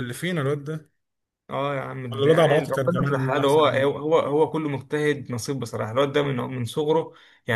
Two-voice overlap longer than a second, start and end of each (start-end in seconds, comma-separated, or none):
2.1-3.9